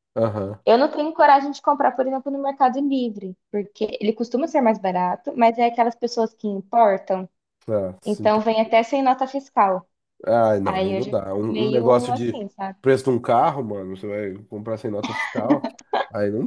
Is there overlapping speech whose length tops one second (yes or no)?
yes